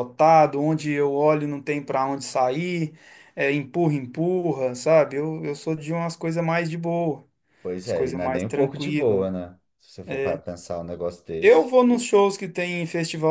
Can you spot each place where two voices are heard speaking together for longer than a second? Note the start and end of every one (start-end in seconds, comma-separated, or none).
7.8-9.2